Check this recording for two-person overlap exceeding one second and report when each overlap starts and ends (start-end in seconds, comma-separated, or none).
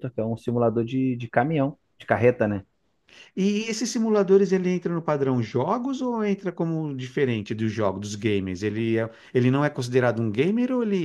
none